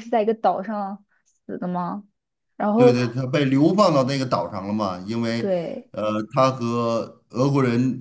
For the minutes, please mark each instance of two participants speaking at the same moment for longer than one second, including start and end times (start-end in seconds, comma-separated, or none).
none